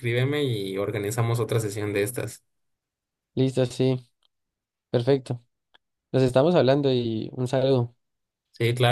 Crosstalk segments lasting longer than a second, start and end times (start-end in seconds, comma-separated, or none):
none